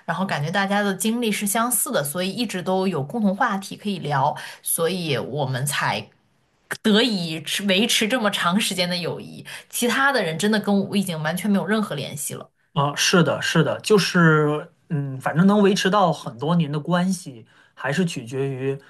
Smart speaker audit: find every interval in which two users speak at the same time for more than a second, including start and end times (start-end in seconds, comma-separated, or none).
none